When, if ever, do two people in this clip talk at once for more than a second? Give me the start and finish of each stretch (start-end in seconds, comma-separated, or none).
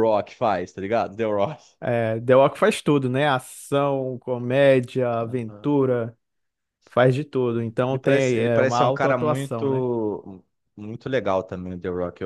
7.9-9.8